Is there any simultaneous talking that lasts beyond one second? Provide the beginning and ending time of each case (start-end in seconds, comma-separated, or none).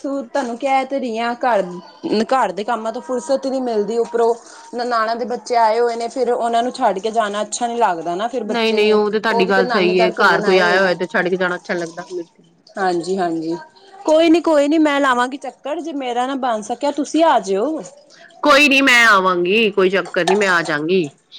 8.5-10.6